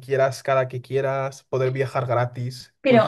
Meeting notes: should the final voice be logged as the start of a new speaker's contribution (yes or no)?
yes